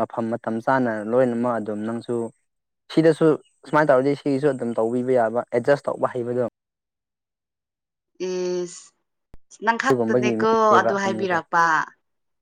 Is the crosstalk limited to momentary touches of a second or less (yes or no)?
no